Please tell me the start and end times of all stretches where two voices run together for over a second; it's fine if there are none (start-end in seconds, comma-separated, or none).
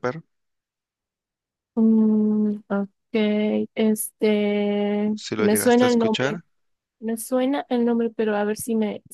5.2-6.4